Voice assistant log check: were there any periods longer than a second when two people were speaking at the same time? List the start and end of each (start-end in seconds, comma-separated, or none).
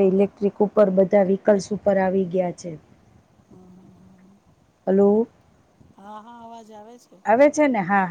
none